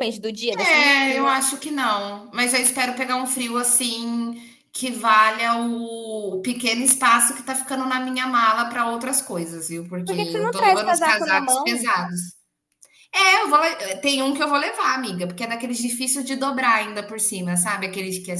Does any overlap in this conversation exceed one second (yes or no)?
yes